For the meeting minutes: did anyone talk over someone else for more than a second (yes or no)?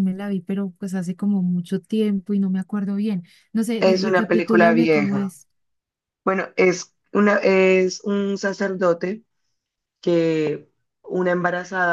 yes